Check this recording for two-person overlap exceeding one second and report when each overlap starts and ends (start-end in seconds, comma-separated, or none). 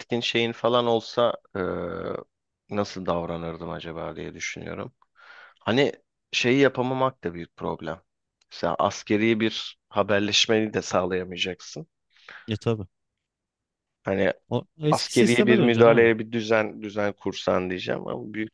14.9-16.1